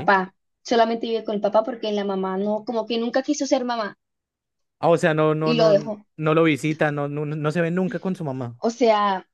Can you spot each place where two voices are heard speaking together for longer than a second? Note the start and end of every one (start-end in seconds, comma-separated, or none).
none